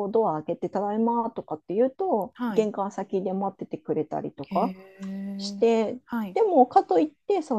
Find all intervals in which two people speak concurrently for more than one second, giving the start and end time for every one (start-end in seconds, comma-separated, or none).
none